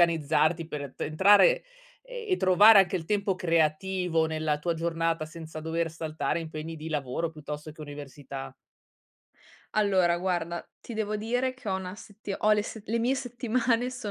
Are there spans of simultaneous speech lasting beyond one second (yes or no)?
no